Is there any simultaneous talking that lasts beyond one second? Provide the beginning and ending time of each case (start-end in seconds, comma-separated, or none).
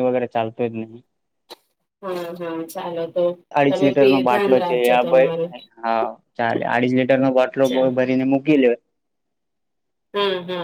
3.7-5.5